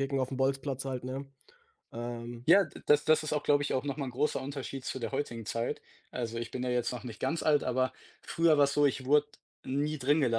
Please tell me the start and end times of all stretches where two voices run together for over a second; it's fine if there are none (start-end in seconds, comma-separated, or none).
none